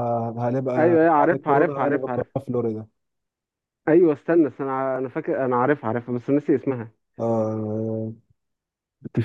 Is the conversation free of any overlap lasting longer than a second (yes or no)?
no